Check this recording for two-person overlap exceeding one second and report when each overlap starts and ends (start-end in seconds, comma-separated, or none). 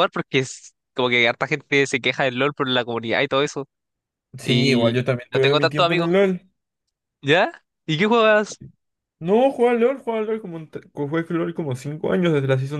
4.4-6.1